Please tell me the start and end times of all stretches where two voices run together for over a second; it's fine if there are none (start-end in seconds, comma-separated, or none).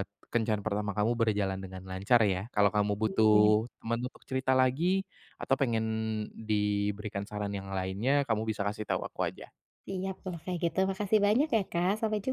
none